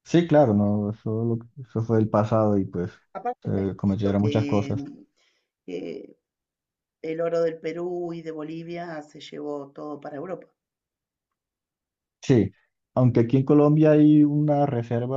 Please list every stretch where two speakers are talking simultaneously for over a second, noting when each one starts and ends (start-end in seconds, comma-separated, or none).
3.4-4.9